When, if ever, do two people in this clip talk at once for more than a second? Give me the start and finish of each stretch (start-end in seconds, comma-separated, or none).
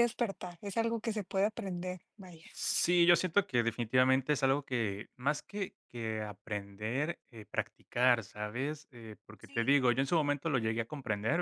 none